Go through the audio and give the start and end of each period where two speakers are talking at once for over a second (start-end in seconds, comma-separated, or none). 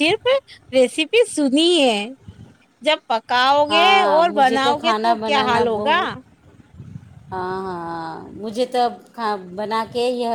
3.7-6.0